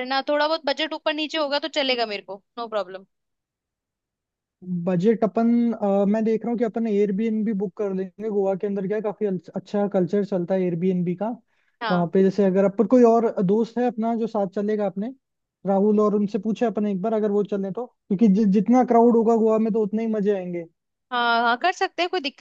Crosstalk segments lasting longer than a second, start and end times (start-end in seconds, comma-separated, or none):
none